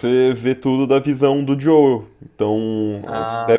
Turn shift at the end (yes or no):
no